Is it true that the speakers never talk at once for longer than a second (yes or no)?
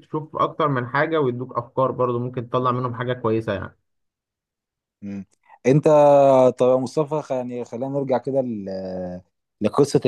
yes